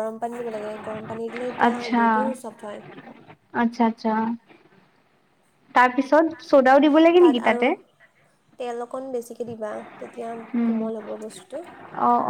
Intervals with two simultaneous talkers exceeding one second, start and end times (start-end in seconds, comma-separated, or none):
none